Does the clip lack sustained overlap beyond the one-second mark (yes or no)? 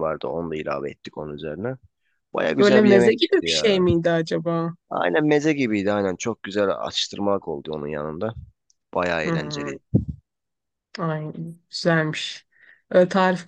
no